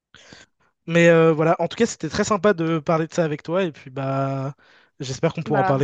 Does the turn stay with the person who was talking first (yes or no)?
yes